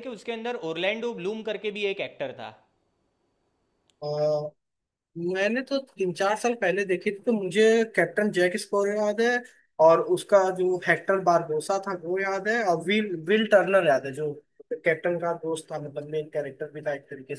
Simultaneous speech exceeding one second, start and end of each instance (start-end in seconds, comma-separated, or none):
none